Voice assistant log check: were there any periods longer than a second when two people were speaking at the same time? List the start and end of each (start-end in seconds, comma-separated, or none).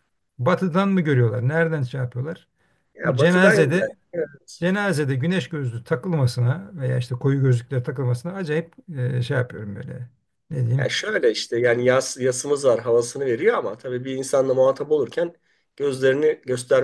none